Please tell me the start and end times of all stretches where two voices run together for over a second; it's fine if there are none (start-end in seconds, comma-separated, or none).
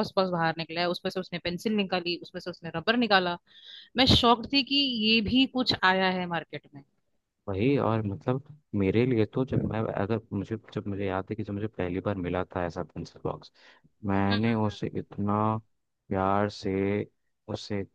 none